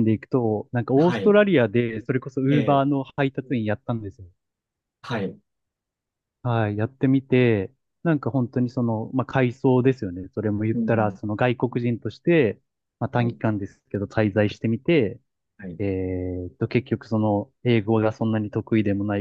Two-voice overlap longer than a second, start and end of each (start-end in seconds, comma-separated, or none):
none